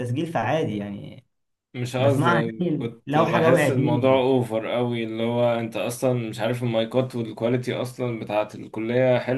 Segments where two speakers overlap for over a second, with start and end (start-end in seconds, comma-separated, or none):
2.0-4.2